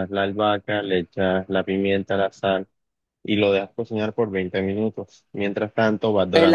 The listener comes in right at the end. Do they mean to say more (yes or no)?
yes